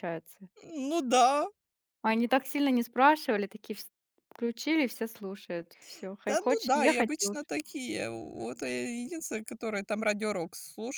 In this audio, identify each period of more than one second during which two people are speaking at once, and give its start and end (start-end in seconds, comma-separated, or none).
6.3-7.6